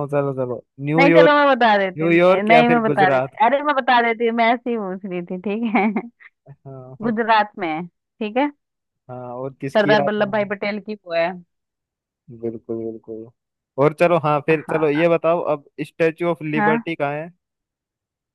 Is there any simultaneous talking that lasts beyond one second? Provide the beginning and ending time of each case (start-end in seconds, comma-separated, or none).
2.0-3.4